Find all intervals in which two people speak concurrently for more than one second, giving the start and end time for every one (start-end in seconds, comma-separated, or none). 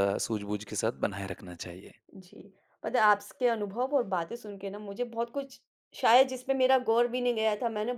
none